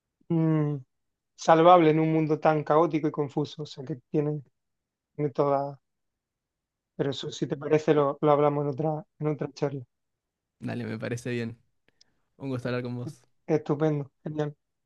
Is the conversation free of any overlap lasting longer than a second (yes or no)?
yes